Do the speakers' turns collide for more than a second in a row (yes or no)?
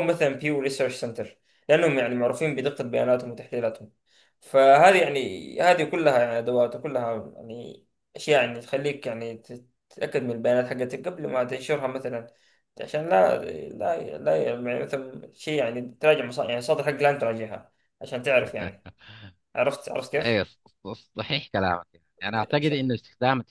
no